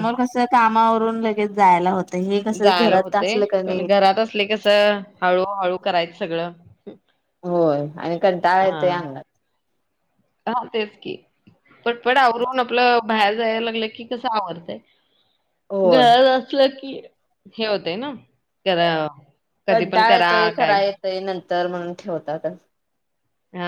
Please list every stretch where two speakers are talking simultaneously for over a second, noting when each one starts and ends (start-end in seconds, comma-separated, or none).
none